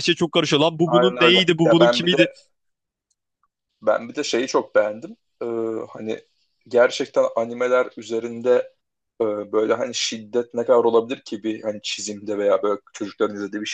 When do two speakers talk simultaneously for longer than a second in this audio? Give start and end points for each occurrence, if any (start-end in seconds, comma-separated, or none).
0.8-2.3